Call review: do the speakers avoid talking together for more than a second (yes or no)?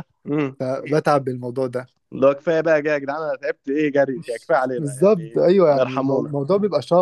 no